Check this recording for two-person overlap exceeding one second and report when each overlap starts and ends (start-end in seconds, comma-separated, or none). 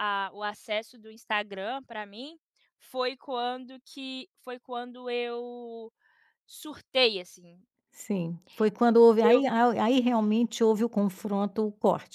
none